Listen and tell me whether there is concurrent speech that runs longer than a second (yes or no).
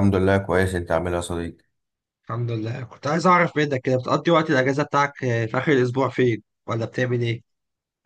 no